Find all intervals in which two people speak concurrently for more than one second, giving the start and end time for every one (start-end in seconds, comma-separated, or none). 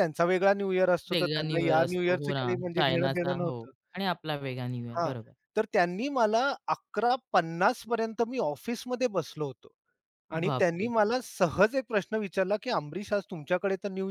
1.1-3.6